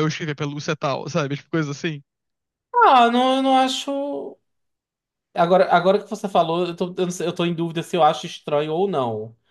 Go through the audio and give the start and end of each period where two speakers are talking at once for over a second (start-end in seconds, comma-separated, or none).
none